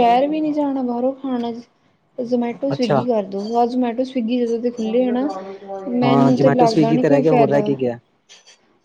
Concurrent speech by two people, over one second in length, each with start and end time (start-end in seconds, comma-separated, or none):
6.0-7.7